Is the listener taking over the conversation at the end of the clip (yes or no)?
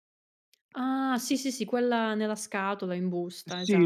yes